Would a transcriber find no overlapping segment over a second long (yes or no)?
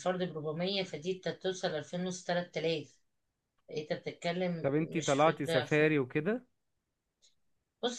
no